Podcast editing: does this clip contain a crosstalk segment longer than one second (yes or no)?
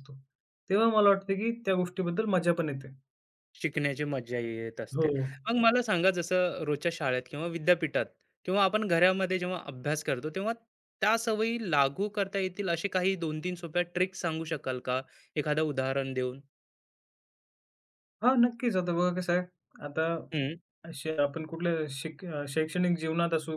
no